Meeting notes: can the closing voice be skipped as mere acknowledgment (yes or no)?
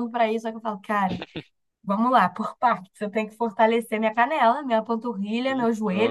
yes